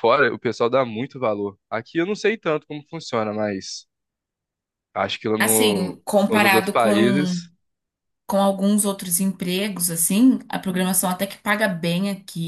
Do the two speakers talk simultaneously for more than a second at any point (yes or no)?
yes